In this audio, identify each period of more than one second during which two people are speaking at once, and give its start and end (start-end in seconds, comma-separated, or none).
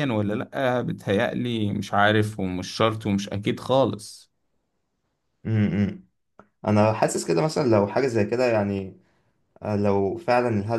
none